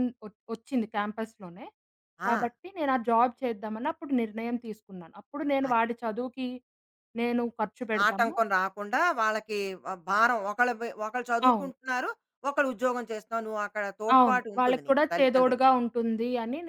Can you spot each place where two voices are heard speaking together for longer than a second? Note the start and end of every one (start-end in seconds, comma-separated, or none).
14.2-15.6